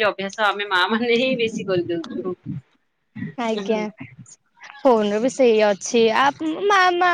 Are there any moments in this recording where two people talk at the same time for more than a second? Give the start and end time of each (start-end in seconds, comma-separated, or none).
none